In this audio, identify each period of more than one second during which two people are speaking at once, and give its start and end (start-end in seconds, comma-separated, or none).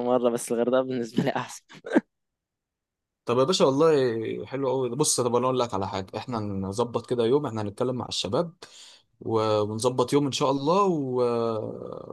none